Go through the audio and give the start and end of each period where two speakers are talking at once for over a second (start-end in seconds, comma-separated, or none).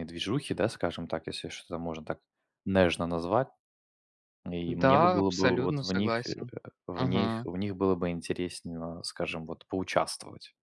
4.7-6.3